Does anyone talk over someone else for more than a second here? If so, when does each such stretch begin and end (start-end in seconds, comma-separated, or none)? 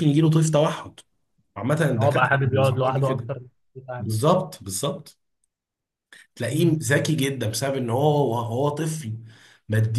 2.0-3.3